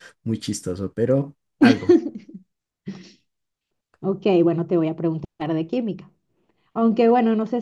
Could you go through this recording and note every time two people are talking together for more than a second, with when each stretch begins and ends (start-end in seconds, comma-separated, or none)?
none